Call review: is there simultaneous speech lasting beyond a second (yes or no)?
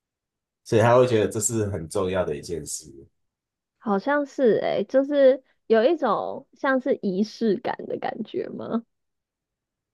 no